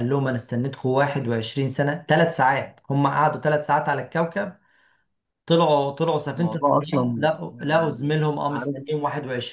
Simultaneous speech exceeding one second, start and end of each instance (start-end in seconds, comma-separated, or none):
6.4-8.8